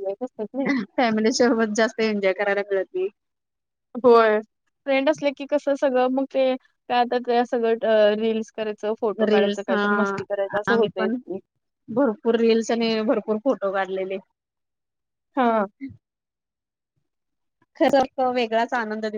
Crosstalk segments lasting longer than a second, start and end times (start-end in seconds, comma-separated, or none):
none